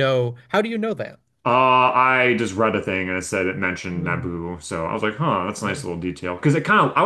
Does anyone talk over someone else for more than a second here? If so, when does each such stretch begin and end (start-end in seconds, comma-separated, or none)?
none